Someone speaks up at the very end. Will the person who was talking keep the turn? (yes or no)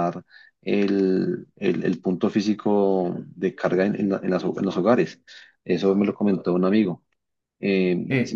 yes